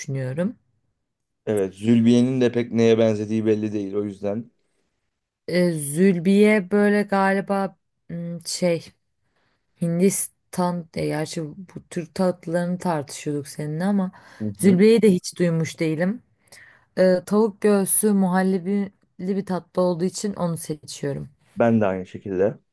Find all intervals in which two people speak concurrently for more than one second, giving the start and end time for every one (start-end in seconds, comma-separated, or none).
none